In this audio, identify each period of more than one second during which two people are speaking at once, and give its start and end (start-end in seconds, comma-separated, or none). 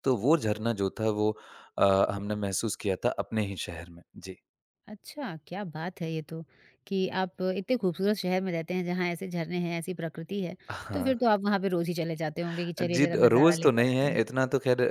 12.8-14.2